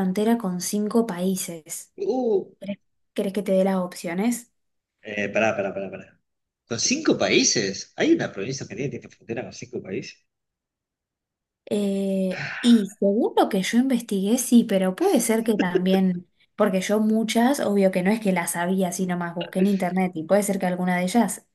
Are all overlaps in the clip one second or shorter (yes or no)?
yes